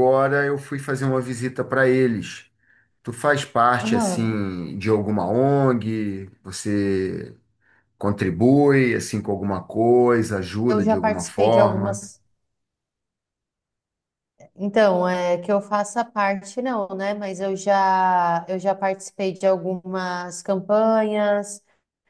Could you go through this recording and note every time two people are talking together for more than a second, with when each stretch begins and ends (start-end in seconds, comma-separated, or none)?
10.7-12.0